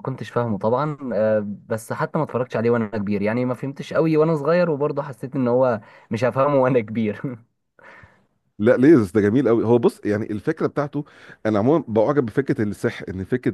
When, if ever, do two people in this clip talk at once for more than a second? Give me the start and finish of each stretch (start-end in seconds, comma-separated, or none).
none